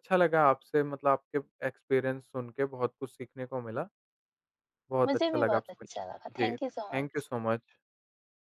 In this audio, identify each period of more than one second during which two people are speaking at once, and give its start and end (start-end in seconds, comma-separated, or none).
5.1-7.3